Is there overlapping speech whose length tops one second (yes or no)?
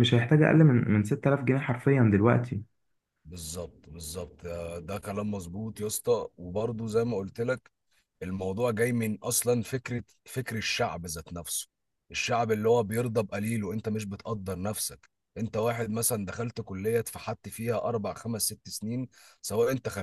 no